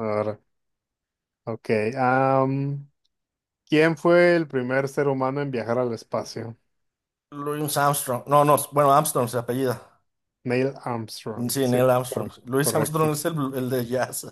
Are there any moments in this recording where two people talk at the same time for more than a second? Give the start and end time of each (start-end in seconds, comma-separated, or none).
11.5-13.1